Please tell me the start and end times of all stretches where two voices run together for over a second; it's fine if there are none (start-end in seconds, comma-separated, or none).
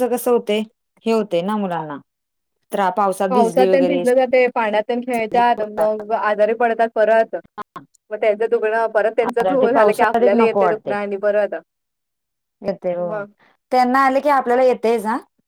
9.2-10.6